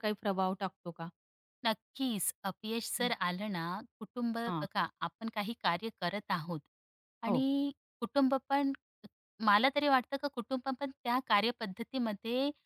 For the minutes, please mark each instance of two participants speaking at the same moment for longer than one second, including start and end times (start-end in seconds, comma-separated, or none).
none